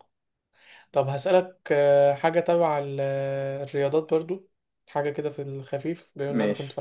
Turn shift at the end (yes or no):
no